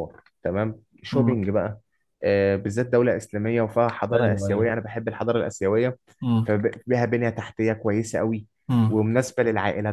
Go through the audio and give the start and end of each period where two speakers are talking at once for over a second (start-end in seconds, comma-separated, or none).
none